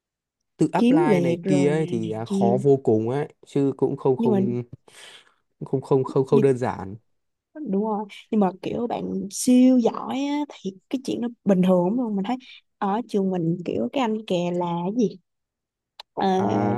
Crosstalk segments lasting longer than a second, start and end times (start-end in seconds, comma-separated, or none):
0.8-2.6